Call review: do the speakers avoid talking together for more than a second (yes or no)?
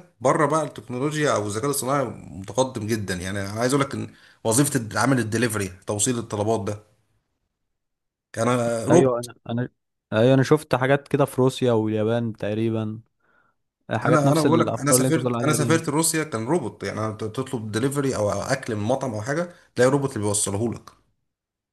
no